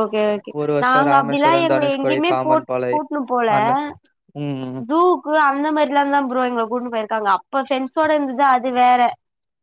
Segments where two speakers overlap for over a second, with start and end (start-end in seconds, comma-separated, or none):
0.6-2.7